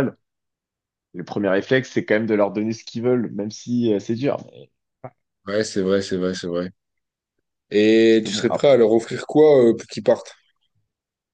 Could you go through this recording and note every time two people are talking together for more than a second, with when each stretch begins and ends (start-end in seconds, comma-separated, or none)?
none